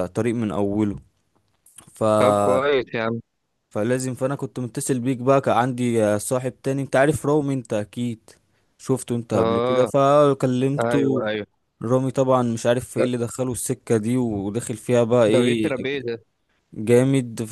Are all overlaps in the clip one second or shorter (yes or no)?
yes